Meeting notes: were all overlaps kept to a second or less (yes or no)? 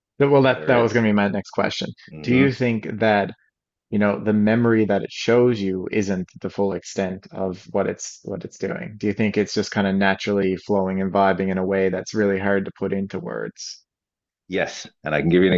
yes